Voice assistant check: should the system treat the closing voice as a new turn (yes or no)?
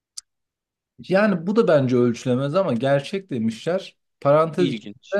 no